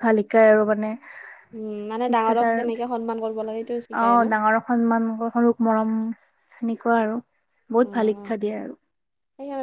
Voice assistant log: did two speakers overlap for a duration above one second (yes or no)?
no